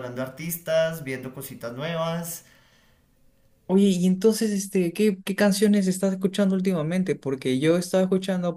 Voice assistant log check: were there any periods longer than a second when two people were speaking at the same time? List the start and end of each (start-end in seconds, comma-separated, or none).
none